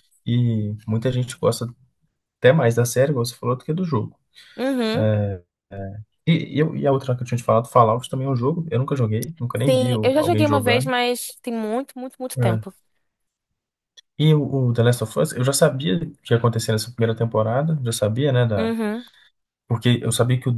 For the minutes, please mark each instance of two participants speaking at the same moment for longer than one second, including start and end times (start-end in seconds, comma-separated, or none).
9.5-10.9